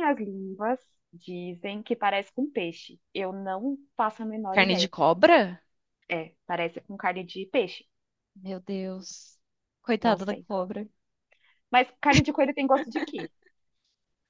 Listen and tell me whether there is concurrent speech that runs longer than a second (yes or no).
no